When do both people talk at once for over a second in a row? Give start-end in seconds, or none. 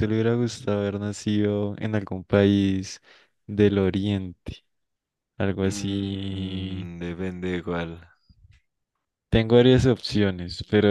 5.6-6.9